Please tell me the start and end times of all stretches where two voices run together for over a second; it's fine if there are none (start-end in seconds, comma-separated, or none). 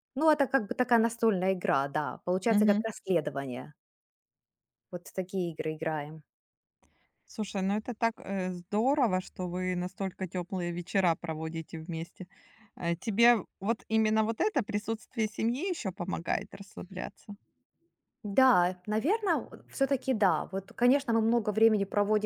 none